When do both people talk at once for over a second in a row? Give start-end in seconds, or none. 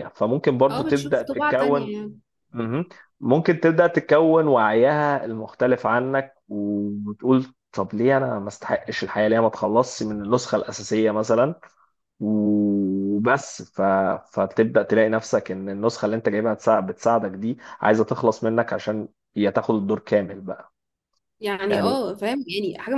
0.7-1.9